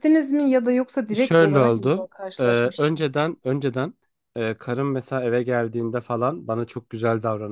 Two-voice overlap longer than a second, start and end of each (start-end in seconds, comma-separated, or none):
1.1-3.2